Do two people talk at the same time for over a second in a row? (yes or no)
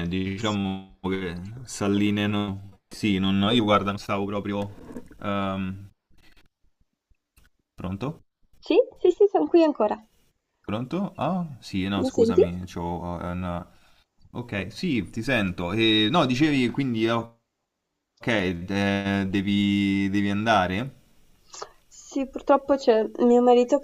no